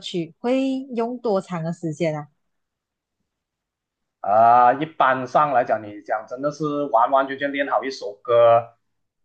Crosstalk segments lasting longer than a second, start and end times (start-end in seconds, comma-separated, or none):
none